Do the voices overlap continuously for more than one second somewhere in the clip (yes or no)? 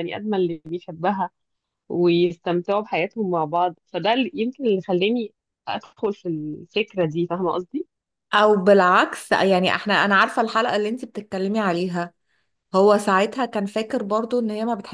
no